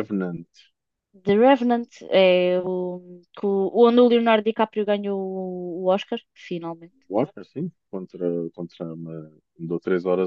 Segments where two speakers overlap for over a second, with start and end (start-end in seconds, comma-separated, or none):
none